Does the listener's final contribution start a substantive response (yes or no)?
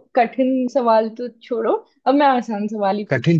yes